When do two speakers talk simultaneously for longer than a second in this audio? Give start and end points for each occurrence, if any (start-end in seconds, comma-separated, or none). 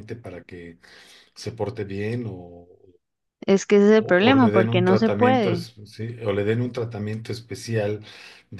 4.0-5.7